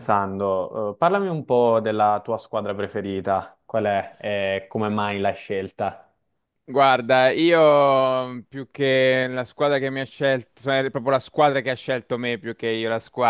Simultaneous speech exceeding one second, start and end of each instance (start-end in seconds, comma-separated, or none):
none